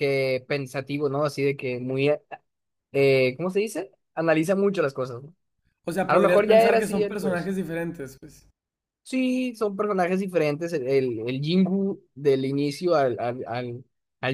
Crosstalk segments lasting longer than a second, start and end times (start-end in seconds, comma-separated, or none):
6.0-7.5